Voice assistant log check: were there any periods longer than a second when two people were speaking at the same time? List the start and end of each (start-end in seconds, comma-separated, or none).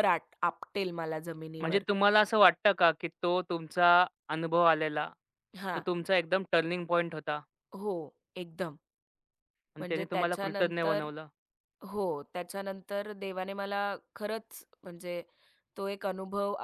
9.8-11.1